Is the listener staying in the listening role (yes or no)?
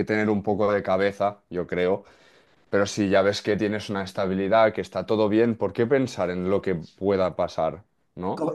no